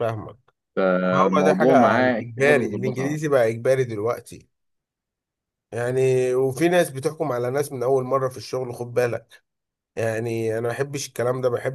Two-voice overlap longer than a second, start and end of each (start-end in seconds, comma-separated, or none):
1.1-3.2